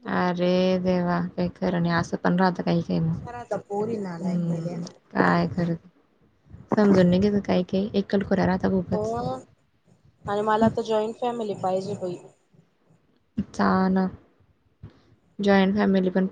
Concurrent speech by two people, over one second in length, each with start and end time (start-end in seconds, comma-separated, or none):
none